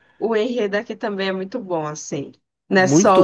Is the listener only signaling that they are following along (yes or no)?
no